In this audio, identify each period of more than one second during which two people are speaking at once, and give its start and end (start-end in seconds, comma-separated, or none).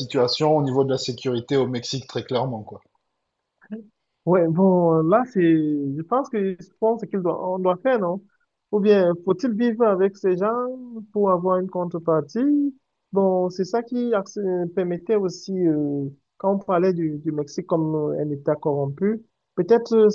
none